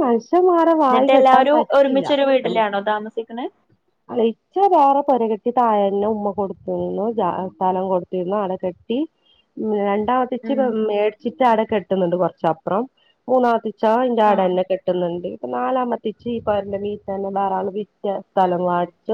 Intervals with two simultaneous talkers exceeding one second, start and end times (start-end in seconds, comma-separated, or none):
0.9-2.6